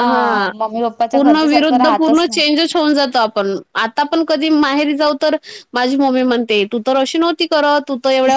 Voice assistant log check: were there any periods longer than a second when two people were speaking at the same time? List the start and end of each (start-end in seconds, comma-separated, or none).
1.1-2.4